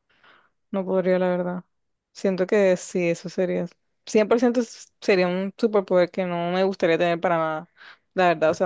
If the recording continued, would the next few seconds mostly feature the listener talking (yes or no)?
no